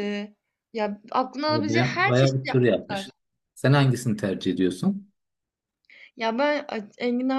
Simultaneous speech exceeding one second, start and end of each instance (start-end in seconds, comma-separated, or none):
1.5-3.1